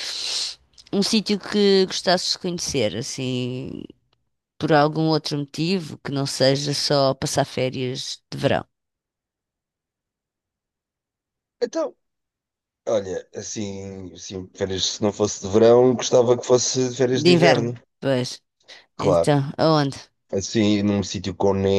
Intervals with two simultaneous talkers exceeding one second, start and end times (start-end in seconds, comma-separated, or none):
none